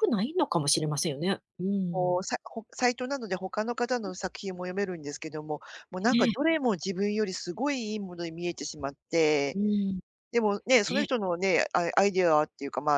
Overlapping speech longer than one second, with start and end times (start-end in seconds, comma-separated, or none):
none